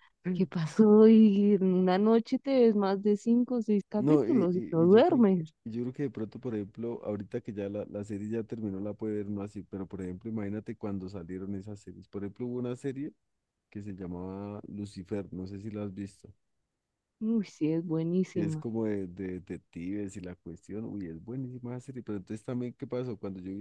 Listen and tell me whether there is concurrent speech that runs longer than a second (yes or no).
yes